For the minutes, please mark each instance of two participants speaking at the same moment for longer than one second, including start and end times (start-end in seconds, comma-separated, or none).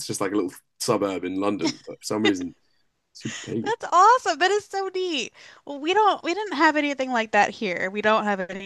none